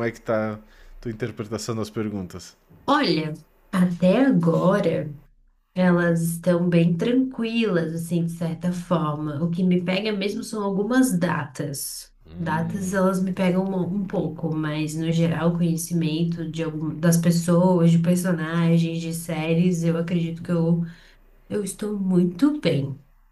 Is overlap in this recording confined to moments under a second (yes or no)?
yes